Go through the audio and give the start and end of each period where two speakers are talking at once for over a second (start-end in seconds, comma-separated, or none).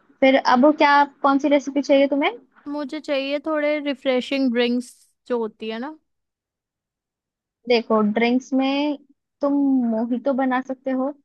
none